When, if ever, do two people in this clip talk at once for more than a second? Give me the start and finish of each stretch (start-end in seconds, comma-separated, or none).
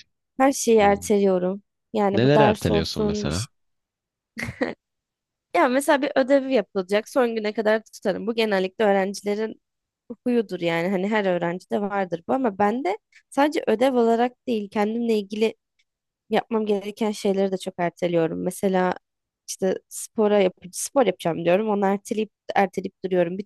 2.1-3.5